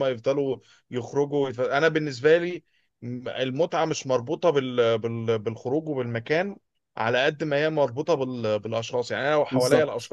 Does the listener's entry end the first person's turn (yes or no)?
no